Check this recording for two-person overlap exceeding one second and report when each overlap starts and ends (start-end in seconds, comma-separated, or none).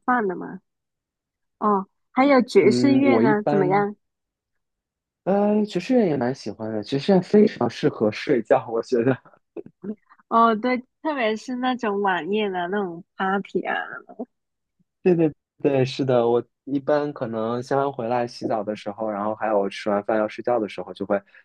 2.6-3.9